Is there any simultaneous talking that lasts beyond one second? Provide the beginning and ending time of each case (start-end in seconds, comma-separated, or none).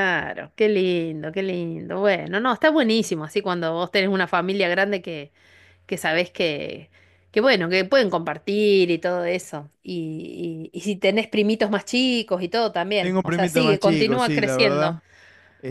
13.0-14.9